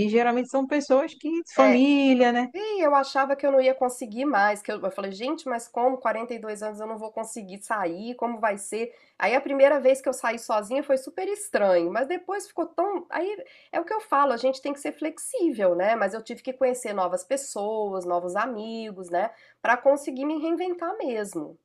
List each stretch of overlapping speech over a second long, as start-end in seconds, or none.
none